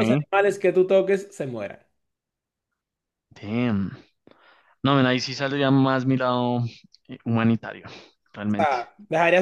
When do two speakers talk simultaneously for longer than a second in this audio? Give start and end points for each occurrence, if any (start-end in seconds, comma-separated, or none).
none